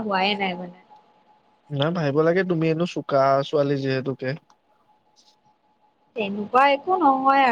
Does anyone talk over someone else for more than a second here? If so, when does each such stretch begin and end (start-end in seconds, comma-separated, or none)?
none